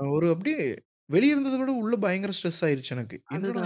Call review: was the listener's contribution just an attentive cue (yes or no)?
no